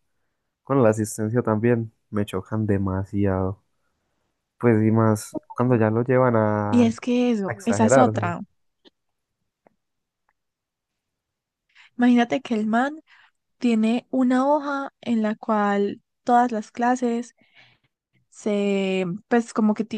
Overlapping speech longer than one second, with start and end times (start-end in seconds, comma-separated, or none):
6.7-8.2